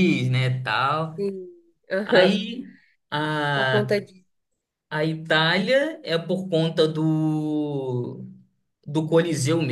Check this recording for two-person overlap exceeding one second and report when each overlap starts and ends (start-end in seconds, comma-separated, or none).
none